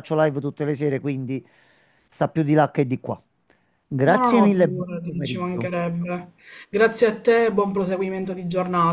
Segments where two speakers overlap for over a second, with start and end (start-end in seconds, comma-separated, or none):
4.1-5.7